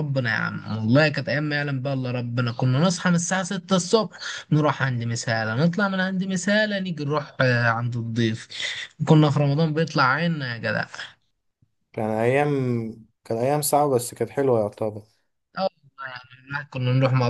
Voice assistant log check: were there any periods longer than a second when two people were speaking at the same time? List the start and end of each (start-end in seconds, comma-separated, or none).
none